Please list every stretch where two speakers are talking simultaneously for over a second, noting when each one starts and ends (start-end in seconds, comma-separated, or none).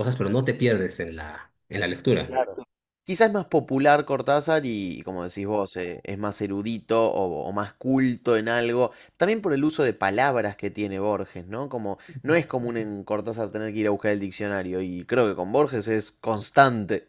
none